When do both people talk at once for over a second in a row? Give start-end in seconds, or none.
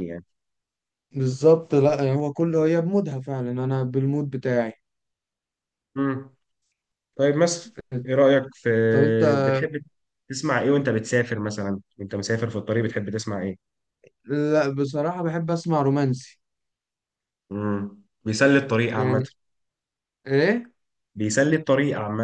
none